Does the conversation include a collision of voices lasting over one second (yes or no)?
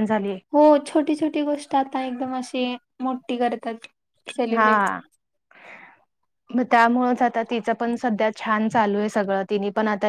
no